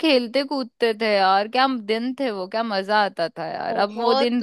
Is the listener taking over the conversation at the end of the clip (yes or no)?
yes